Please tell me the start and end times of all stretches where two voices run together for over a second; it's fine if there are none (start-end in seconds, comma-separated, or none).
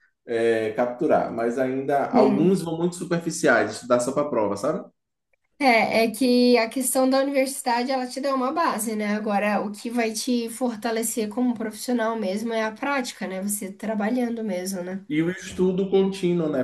none